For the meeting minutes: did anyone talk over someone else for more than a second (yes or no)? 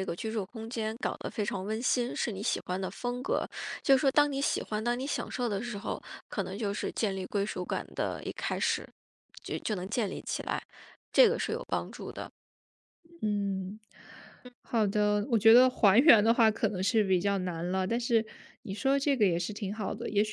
no